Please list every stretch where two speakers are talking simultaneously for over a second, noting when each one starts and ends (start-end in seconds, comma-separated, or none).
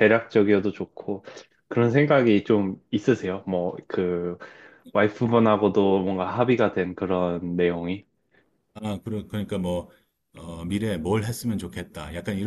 none